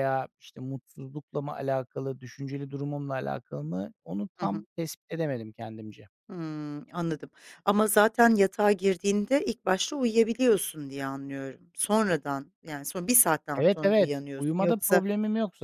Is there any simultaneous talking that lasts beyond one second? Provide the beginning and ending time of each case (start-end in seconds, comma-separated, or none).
13.5-15.0